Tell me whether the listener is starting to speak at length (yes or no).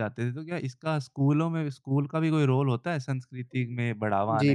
yes